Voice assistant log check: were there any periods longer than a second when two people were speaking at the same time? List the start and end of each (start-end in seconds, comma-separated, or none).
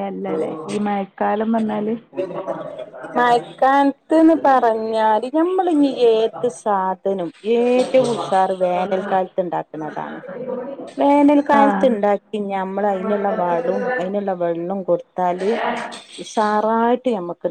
none